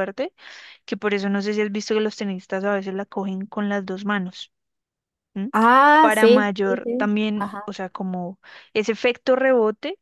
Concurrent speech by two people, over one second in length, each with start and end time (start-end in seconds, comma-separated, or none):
6.0-7.7